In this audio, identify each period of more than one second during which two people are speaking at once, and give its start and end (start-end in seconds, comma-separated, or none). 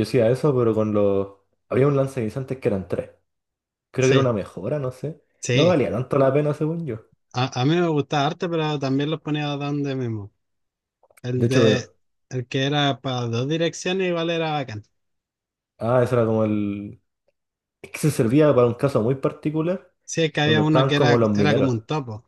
20.4-21.7